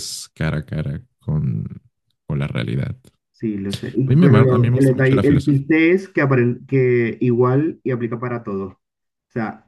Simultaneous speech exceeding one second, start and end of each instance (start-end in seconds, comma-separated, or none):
4.0-5.6